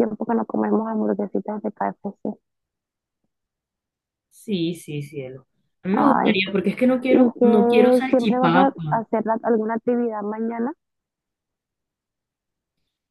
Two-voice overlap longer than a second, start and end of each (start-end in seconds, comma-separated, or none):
7.1-9.0